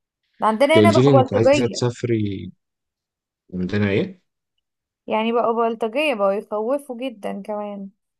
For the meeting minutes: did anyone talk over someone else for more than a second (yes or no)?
yes